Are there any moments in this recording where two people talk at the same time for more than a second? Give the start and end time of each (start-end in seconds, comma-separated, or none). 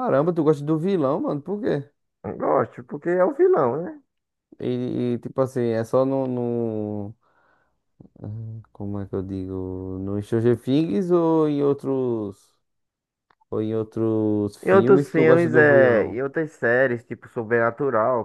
14.6-16.2